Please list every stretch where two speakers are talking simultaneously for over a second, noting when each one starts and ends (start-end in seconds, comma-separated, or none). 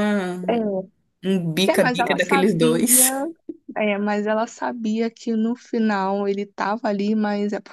1.7-3.0